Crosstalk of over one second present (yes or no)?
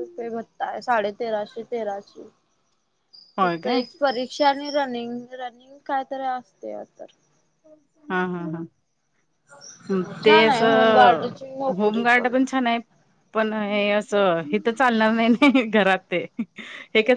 yes